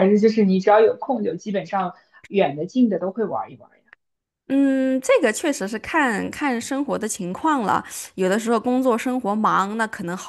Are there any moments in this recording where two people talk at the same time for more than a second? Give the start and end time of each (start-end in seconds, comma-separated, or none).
none